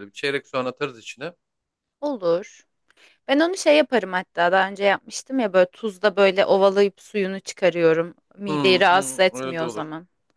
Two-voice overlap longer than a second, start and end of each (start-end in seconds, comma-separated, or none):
8.5-9.8